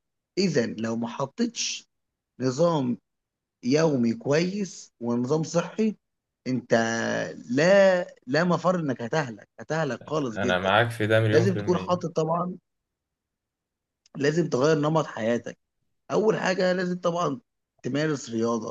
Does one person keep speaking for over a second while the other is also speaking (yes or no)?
no